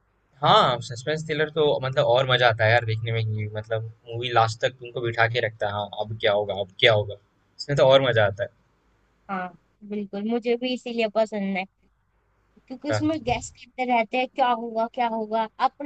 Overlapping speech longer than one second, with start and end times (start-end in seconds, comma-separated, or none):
none